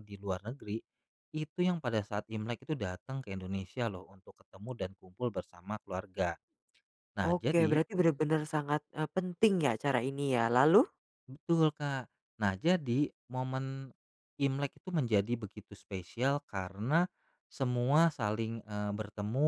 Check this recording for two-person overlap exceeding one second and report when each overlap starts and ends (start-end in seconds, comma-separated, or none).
none